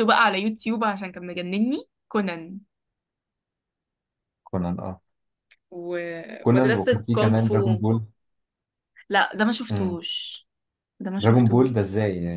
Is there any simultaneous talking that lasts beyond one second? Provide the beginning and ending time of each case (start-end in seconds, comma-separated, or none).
6.4-7.8